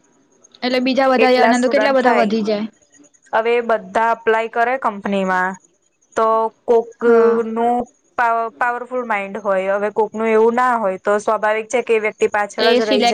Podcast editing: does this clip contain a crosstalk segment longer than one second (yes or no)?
yes